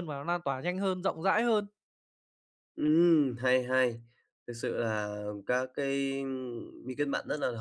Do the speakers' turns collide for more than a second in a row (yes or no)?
no